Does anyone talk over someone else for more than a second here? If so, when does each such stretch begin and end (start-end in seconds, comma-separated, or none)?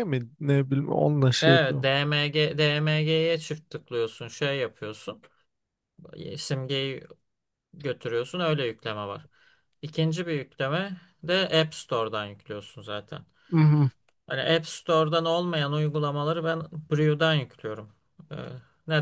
none